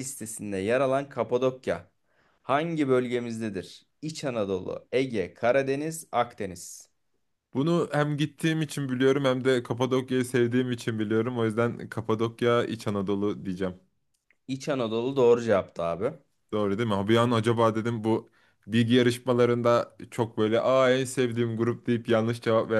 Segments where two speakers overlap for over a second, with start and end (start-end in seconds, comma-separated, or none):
none